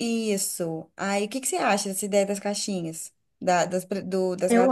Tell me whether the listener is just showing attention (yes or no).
yes